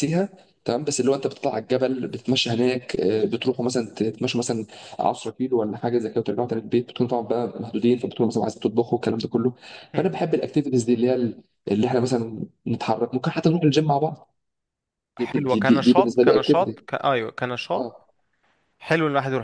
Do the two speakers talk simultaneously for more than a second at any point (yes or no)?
yes